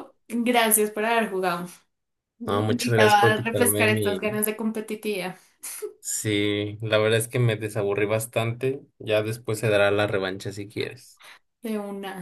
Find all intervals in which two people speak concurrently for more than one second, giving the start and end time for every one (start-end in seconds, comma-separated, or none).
2.5-4.3